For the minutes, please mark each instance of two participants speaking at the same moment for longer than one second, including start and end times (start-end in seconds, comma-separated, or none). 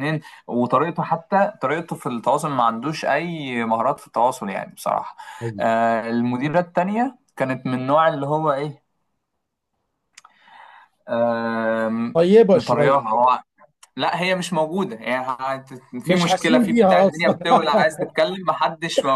16.1-17.4